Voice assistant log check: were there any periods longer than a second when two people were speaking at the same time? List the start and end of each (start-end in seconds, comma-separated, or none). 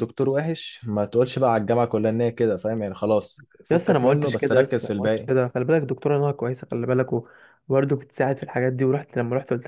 3.7-5.3